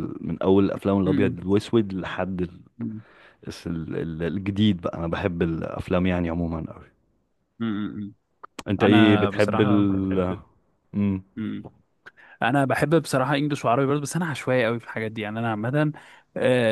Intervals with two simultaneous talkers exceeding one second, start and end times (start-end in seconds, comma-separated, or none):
8.8-10.3